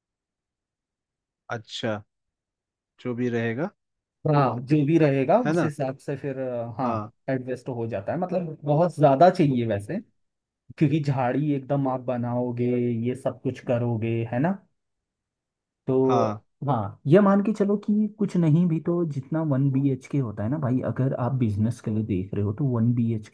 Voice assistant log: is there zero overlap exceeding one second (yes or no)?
yes